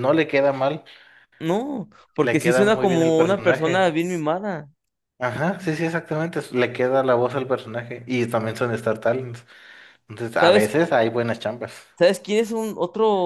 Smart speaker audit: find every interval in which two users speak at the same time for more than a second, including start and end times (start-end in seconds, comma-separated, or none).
2.2-3.9